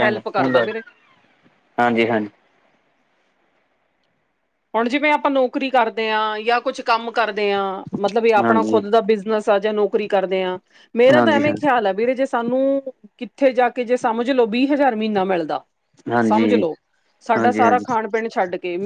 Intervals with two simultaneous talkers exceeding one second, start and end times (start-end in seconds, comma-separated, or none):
none